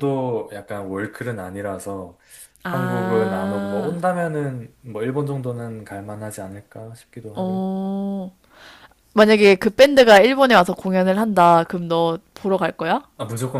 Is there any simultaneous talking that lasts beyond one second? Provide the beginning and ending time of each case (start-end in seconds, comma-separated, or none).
2.7-4.0